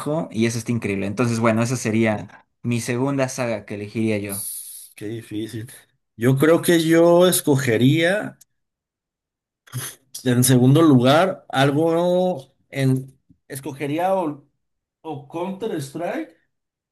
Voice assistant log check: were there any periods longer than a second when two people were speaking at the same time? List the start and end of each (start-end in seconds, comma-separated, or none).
none